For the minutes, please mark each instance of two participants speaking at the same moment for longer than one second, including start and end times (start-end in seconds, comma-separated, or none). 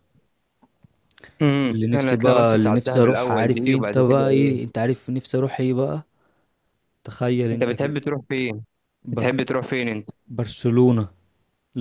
1.7-4.6